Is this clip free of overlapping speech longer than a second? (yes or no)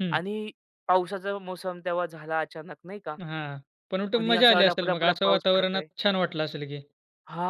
no